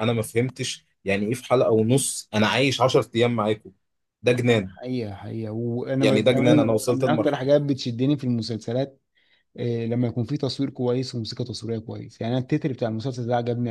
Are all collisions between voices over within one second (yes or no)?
no